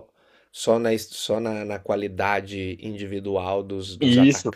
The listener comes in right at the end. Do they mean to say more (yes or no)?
yes